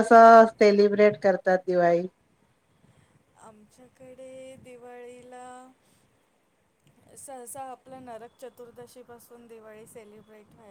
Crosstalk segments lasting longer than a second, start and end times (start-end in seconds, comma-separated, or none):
none